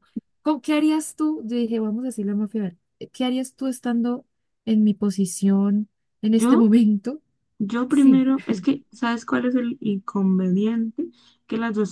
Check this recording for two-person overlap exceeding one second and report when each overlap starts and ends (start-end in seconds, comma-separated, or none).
none